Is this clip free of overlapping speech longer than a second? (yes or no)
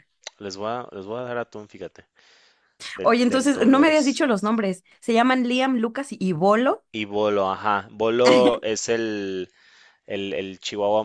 no